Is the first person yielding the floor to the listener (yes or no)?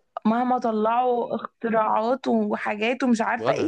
yes